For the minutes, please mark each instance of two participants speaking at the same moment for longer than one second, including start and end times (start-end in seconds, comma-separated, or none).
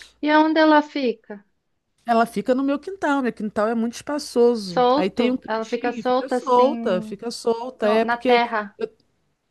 4.5-7.2